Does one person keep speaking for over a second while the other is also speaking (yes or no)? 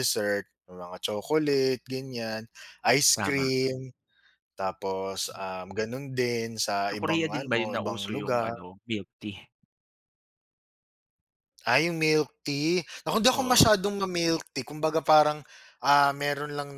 yes